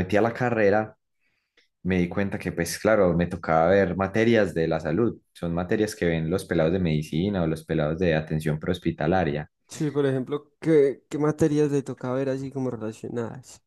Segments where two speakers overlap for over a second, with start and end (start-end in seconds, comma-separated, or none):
none